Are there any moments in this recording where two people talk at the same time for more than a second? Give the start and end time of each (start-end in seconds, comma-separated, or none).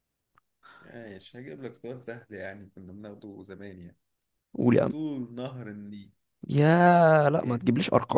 none